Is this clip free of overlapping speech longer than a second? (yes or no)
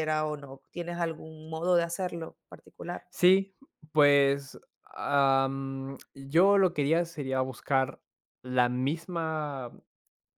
yes